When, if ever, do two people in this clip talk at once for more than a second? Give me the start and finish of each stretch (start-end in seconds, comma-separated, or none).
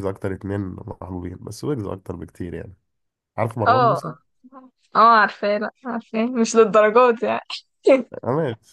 none